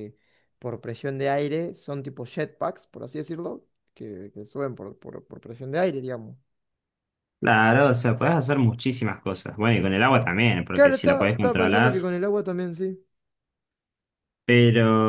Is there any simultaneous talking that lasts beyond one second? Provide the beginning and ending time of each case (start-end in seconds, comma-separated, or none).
10.7-12.1